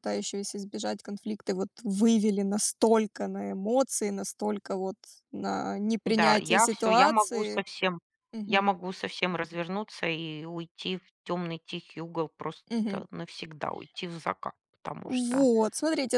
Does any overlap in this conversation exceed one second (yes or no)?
yes